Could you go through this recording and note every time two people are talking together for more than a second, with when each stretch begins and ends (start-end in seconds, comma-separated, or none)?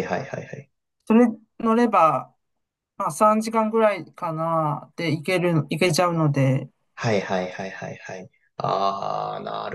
none